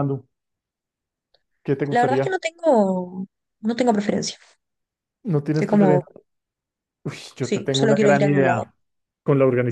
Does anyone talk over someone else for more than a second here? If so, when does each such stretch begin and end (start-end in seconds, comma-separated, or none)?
7.4-8.6